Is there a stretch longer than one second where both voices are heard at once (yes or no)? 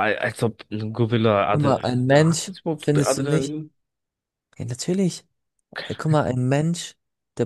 yes